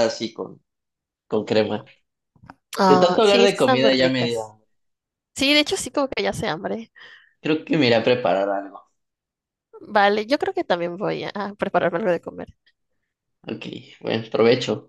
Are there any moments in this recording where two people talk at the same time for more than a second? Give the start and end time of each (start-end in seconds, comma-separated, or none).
2.9-4.5